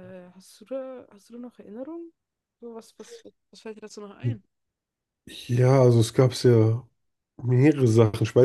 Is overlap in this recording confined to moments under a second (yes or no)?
yes